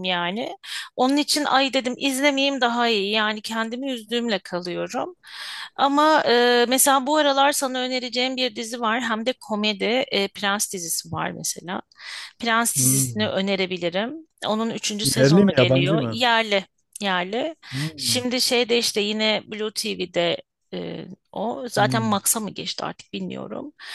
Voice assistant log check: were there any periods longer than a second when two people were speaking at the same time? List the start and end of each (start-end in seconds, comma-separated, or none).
15.0-16.2